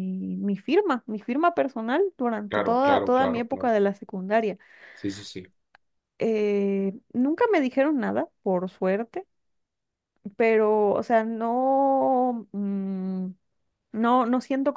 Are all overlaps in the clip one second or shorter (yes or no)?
no